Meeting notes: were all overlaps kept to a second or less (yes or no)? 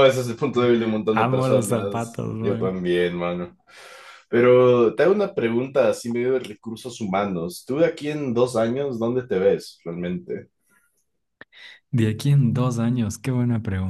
no